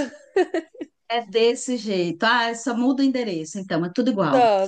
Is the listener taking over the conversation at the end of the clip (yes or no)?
yes